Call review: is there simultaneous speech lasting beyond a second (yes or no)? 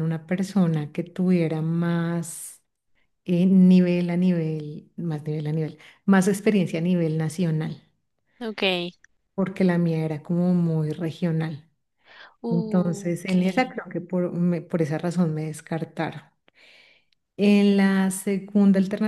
yes